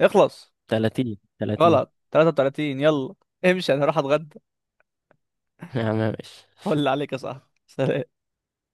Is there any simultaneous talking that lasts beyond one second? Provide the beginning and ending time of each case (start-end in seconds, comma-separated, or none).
none